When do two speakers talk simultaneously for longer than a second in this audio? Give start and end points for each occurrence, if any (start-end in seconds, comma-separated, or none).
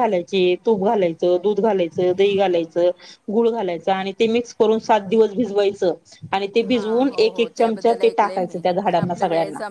6.7-8.3